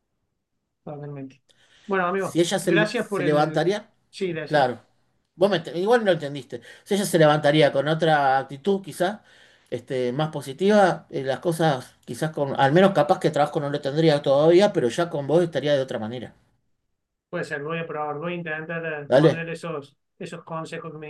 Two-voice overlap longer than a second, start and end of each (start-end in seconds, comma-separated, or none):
2.2-3.7